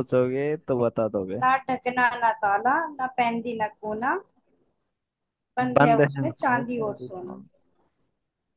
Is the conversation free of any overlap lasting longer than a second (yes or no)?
no